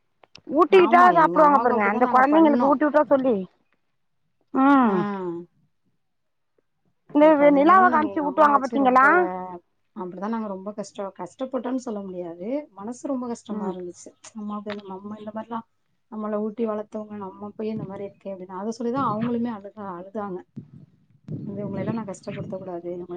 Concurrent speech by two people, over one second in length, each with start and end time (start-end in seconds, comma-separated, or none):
0.8-2.8, 7.4-9.0